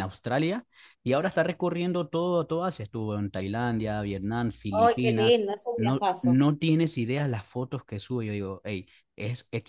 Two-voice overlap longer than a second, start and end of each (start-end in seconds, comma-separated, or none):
4.7-6.4